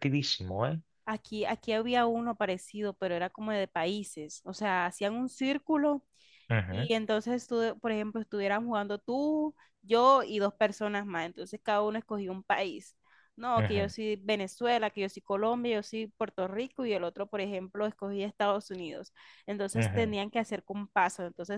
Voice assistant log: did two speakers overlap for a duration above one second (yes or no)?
no